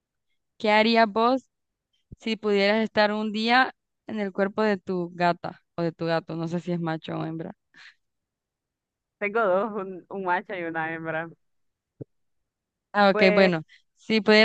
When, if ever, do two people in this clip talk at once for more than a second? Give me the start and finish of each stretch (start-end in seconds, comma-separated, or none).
none